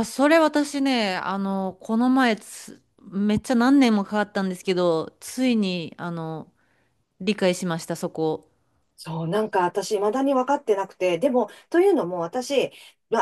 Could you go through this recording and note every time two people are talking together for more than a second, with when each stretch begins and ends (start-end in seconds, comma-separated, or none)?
none